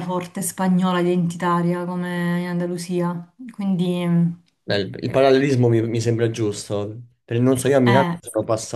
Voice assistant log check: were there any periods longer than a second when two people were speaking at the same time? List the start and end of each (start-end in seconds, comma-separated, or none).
none